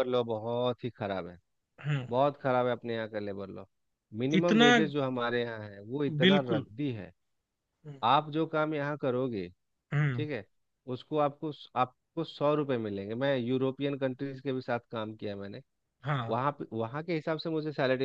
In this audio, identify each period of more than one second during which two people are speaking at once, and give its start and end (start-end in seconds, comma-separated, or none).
none